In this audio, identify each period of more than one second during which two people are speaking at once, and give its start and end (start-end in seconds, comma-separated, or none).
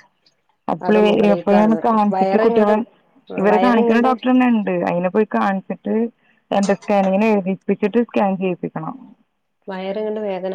0.9-2.7